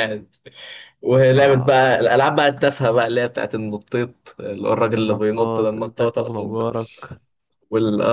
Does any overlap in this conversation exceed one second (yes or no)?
yes